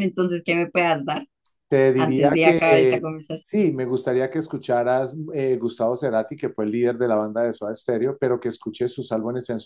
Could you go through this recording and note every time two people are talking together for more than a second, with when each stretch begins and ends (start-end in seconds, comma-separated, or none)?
2.0-3.8